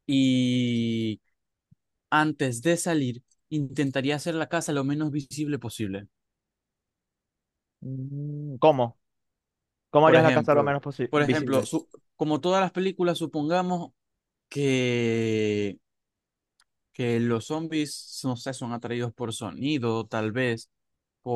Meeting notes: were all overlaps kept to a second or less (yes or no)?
no